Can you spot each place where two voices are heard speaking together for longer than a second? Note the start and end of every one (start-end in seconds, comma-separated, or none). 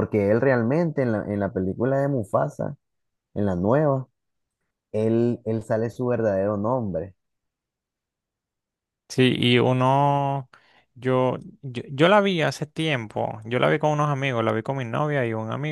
none